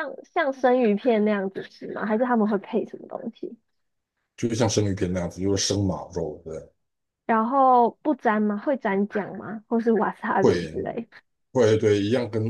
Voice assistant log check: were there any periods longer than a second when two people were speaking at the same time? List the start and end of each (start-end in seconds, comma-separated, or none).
none